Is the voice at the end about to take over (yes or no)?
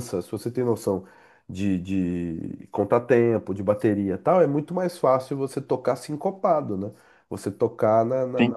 no